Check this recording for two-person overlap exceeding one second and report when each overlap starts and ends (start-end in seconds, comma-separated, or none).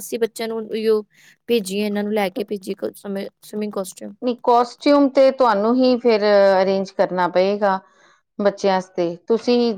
none